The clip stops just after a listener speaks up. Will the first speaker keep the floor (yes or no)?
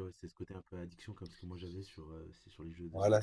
no